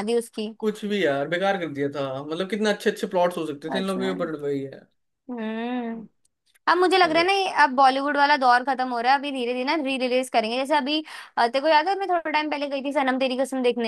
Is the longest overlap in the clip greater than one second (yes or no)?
no